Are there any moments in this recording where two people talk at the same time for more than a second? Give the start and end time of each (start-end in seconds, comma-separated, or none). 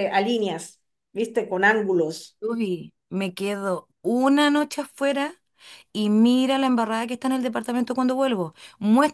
none